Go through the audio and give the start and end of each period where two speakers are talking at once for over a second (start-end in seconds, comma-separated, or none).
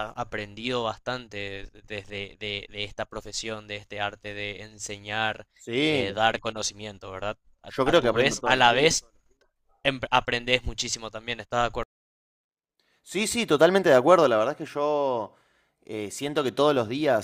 7.7-8.9